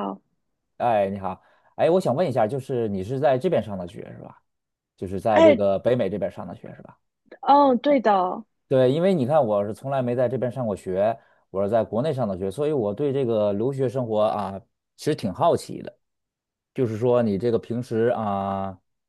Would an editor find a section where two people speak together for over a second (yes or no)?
no